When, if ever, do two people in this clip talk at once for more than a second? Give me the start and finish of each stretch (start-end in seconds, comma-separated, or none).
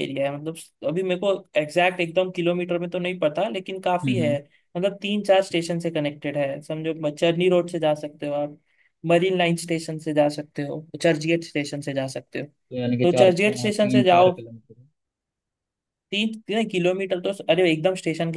13.0-14.4